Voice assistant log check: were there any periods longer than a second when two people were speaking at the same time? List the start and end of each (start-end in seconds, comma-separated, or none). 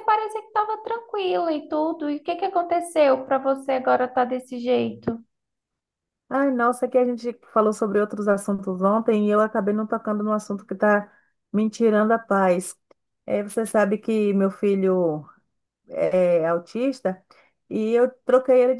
none